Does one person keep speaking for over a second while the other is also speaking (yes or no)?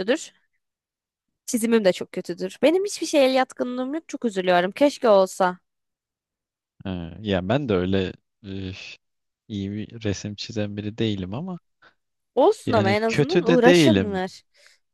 yes